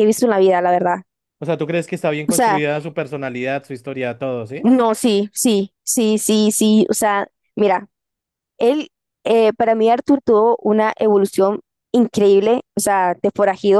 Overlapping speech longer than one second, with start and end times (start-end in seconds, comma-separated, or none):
none